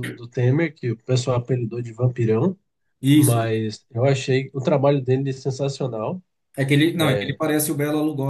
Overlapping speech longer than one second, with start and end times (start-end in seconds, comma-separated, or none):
none